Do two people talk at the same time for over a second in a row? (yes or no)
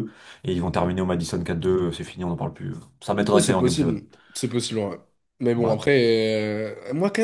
no